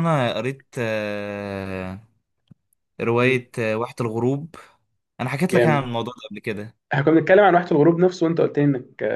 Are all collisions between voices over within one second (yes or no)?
yes